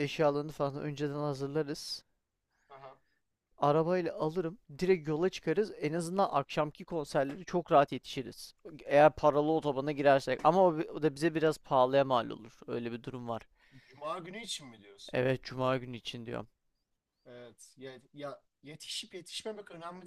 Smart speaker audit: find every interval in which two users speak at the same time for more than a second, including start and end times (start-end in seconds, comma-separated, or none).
none